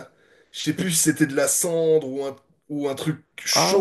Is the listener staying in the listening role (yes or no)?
no